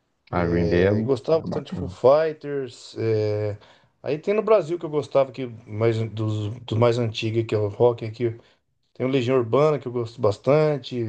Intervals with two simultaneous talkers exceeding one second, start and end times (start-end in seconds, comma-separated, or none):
0.6-1.9